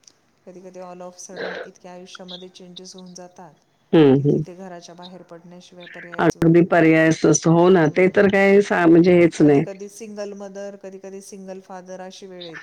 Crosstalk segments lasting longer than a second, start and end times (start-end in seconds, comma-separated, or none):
none